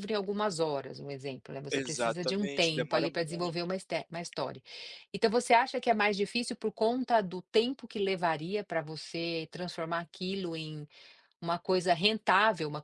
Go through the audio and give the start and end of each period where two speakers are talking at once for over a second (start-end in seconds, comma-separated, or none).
1.7-3.7